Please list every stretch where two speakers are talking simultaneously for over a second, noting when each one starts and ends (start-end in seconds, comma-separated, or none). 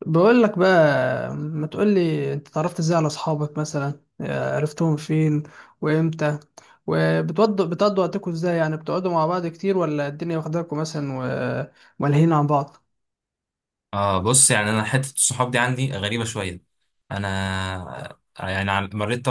none